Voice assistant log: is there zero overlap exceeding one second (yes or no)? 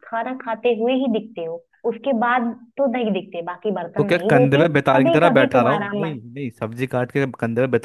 no